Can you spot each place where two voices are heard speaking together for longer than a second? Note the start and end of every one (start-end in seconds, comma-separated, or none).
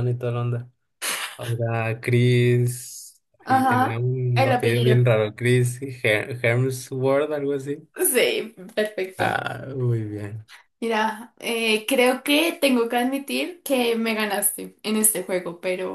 3.4-5.0